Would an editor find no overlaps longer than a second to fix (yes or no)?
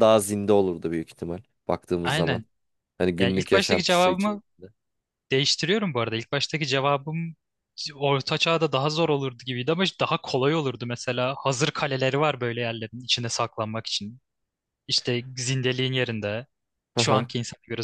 no